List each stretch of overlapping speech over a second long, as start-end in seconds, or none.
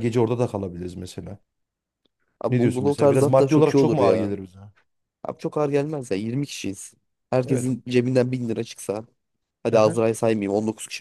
2.5-4.3